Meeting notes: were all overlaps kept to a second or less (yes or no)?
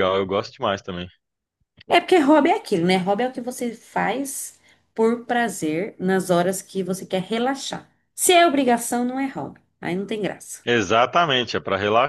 yes